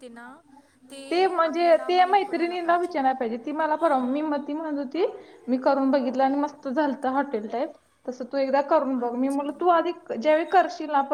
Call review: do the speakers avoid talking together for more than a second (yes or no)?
no